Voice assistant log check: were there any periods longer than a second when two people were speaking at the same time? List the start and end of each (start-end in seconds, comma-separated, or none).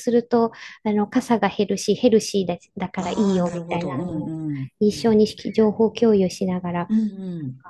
3.0-4.3